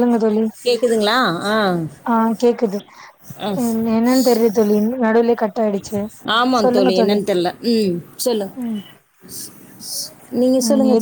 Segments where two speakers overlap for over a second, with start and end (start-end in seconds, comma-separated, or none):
none